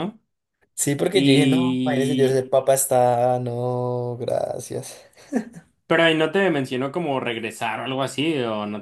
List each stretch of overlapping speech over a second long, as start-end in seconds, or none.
1.1-2.5